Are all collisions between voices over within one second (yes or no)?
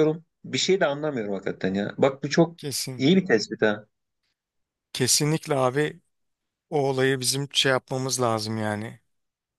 yes